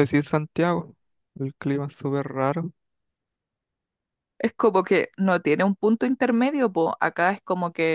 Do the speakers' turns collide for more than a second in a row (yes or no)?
no